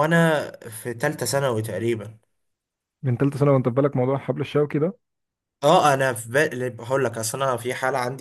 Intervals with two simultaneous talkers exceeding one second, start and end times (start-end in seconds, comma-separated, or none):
none